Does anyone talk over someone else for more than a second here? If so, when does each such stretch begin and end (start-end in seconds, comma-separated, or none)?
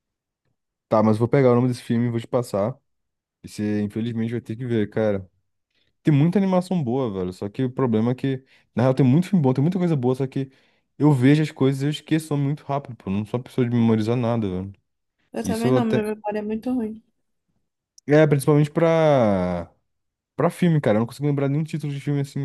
none